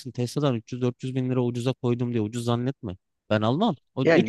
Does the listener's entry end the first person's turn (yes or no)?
yes